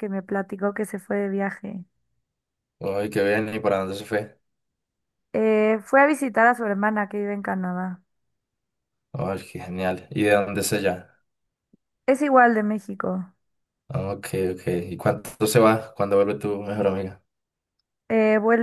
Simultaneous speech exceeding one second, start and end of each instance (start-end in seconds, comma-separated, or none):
none